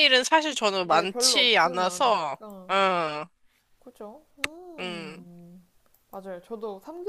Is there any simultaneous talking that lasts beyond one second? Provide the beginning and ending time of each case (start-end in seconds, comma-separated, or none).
0.8-2.8